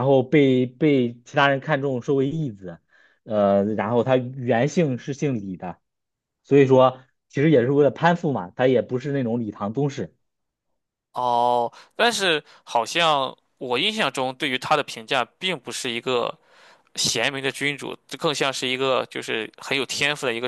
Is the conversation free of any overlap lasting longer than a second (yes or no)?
yes